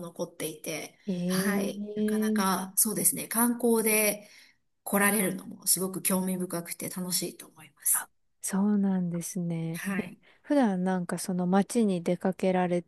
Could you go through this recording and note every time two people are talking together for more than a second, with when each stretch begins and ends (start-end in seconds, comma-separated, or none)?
1.1-2.6